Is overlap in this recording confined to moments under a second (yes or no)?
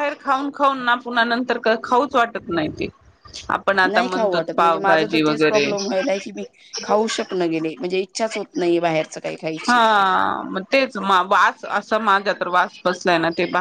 no